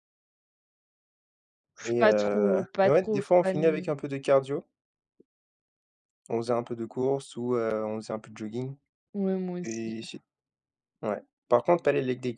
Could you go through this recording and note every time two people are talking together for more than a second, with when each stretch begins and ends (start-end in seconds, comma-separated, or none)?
1.9-3.9